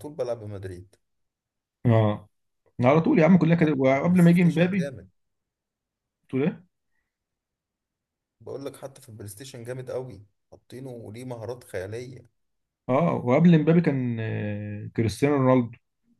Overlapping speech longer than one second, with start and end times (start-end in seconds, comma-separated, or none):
3.6-4.9